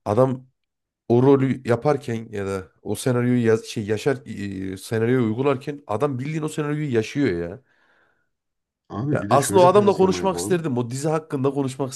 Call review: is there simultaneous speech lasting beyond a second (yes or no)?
yes